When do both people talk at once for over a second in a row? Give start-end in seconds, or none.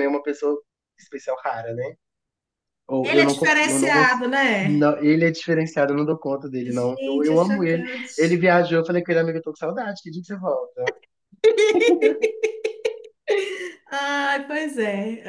3.0-4.9, 6.6-8.4